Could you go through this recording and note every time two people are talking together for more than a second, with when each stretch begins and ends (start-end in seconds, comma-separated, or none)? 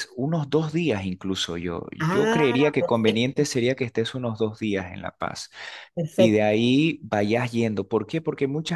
2.0-3.4